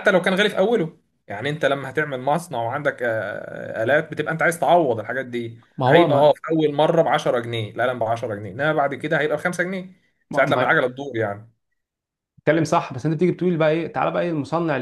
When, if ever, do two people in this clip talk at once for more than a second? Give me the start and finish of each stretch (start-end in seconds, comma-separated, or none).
none